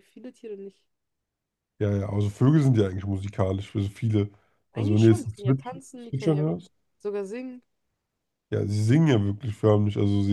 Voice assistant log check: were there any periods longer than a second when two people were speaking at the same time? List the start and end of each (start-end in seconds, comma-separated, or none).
4.7-6.4